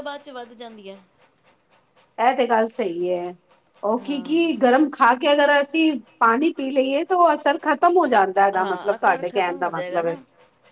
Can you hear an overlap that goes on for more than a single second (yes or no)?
yes